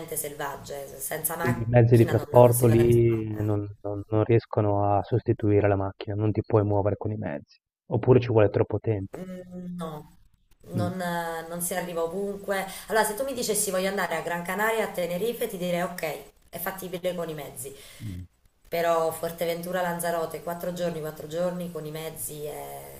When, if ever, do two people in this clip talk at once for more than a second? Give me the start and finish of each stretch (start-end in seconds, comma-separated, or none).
1.4-3.6